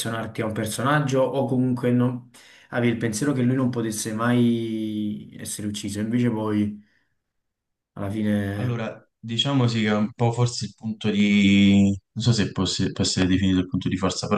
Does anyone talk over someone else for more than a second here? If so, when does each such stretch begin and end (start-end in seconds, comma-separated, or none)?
none